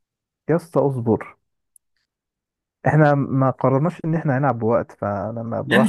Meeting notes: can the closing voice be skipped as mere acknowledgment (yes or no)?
no